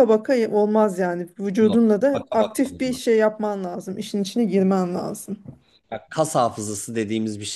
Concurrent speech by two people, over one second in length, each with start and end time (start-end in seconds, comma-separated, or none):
1.6-3.2